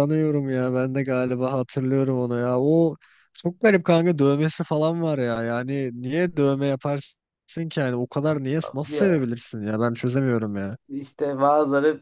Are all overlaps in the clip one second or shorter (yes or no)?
yes